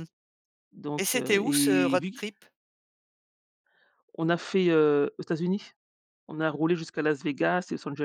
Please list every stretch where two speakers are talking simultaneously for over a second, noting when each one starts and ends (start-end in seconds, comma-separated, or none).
1.0-2.2